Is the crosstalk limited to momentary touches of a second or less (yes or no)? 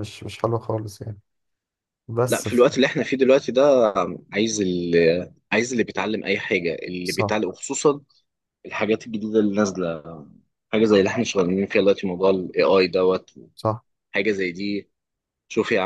yes